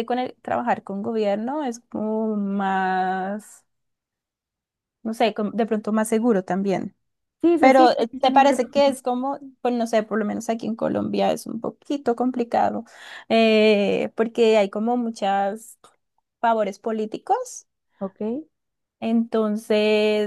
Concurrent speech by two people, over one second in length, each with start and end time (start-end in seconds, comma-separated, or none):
7.6-9.0